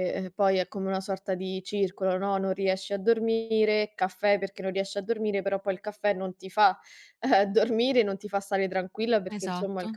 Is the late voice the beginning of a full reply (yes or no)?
no